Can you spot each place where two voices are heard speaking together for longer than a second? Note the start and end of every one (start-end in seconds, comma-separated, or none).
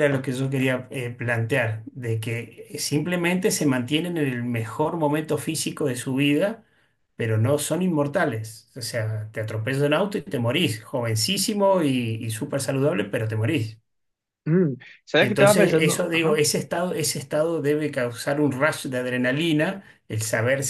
15.2-16.4